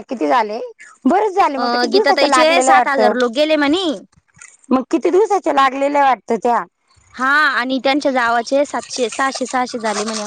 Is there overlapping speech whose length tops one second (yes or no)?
yes